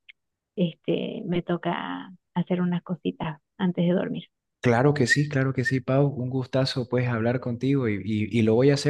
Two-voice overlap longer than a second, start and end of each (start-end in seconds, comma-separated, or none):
none